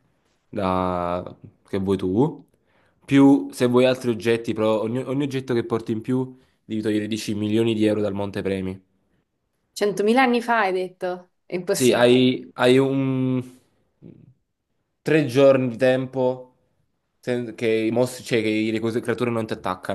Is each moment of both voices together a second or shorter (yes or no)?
yes